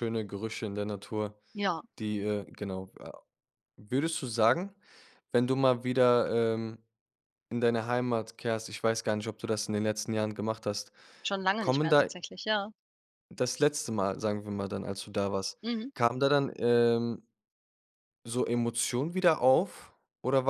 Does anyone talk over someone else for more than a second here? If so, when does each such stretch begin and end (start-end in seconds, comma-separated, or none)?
none